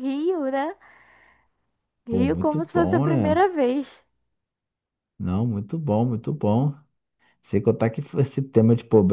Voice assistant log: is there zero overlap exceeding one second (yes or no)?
no